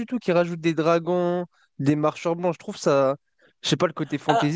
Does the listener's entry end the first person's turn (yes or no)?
yes